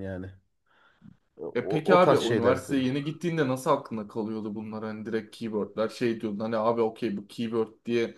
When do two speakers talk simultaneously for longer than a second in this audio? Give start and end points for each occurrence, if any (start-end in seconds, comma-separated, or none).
1.6-2.9